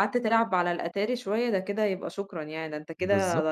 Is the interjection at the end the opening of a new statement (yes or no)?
yes